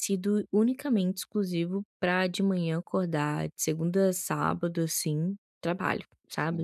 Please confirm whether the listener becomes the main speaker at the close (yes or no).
yes